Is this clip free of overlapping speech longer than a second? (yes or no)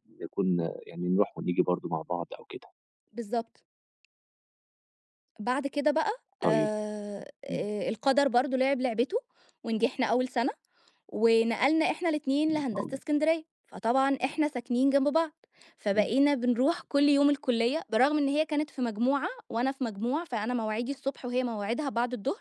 yes